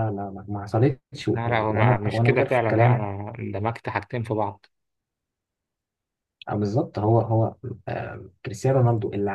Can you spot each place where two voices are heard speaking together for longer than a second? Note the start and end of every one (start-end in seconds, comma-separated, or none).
1.3-3.1